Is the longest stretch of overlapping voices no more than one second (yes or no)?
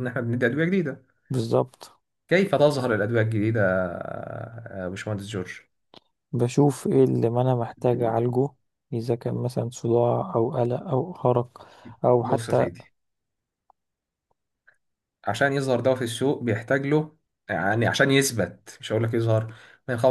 yes